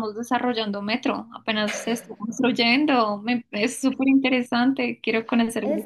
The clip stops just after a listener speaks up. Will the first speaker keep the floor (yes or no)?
no